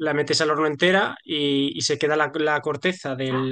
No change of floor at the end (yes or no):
yes